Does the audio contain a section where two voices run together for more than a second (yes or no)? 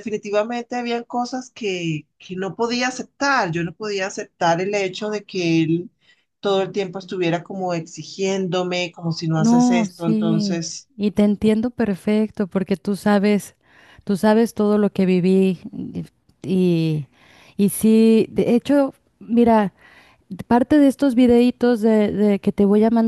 yes